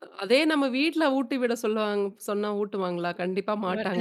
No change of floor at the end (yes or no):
yes